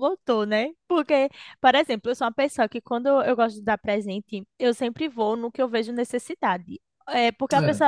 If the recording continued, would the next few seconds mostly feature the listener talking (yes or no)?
no